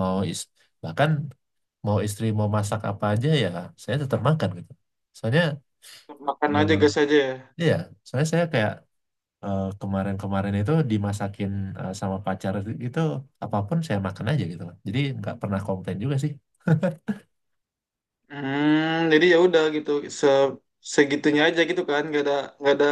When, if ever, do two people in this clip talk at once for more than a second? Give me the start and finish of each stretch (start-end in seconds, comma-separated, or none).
none